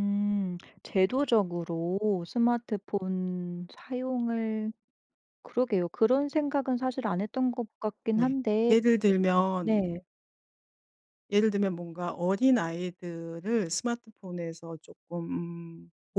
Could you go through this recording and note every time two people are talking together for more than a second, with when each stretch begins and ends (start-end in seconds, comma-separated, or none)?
none